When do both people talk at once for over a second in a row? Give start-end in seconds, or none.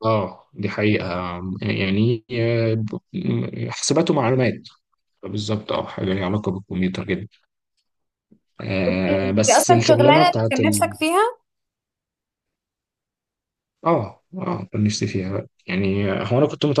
8.9-11.0